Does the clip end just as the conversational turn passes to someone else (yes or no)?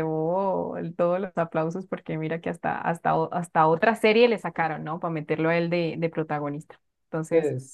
no